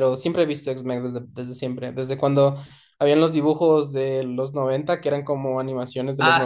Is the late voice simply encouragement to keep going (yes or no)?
no